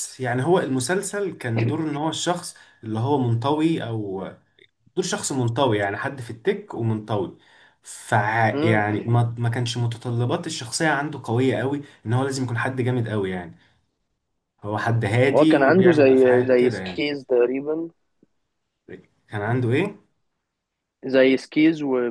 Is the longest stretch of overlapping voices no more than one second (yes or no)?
no